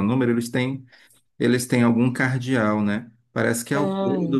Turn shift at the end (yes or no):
no